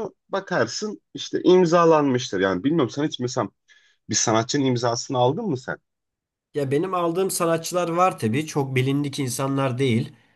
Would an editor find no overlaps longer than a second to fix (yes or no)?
yes